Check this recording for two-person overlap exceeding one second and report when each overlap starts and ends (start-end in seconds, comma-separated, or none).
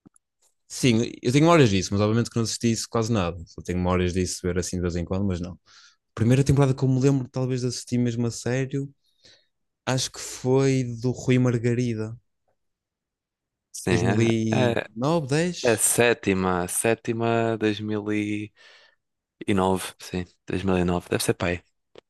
none